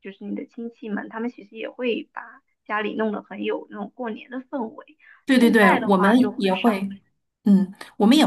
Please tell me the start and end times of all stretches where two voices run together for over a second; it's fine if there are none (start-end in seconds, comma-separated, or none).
5.4-6.7